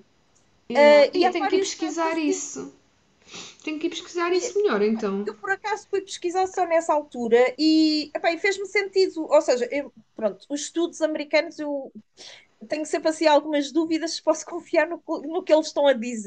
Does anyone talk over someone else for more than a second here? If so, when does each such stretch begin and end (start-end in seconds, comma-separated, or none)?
0.8-2.5